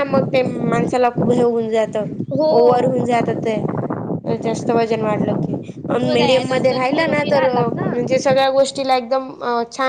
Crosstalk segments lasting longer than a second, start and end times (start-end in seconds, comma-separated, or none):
5.9-7.5